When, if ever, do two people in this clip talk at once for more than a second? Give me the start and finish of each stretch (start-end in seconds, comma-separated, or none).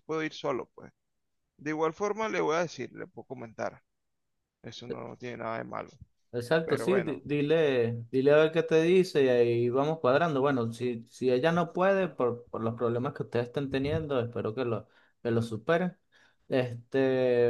none